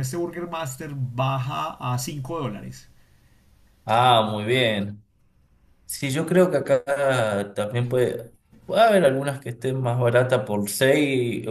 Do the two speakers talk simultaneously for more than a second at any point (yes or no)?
no